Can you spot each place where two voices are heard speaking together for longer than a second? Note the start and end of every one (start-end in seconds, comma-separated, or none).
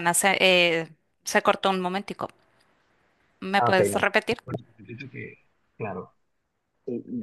none